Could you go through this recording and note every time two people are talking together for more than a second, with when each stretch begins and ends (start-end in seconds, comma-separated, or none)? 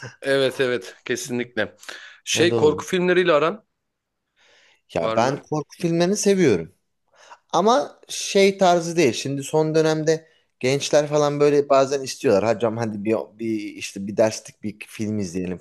none